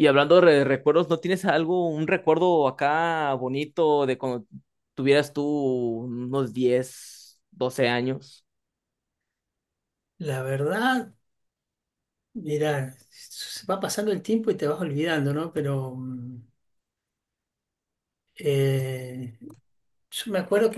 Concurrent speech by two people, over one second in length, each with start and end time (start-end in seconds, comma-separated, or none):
none